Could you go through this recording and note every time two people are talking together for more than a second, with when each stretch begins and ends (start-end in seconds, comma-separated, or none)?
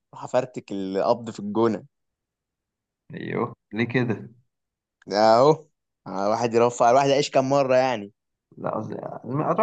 none